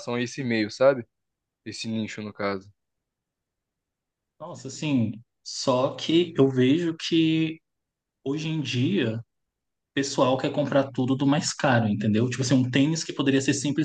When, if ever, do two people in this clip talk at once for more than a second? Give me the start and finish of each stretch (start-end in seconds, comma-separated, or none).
none